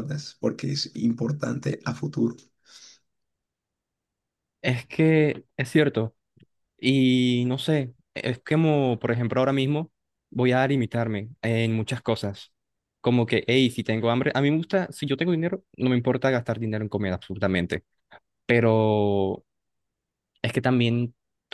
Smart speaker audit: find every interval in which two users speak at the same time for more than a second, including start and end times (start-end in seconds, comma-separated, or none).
none